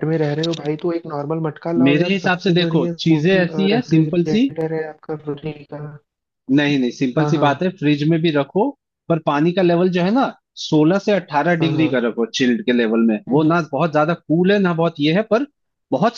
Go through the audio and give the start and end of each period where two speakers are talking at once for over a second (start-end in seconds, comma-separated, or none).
1.9-4.5